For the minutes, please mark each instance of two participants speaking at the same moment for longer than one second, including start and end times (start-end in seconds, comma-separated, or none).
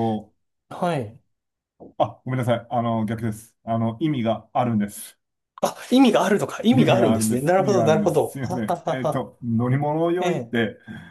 6.7-9.3